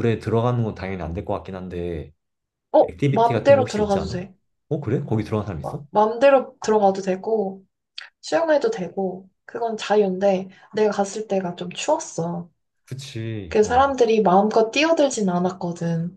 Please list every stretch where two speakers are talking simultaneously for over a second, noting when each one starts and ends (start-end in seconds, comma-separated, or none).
2.8-4.2